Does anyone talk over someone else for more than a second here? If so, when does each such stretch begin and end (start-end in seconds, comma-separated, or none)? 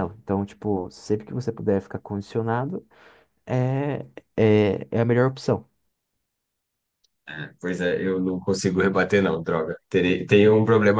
none